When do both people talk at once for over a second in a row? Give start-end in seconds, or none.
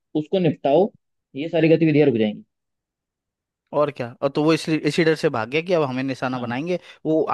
none